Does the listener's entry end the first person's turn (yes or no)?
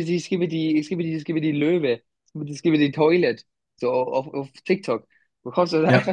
no